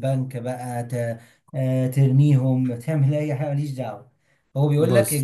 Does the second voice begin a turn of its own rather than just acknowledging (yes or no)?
no